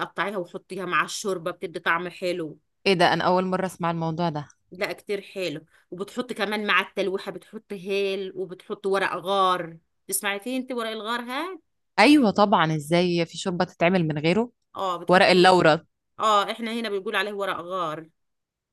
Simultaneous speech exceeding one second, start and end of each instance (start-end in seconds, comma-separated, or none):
none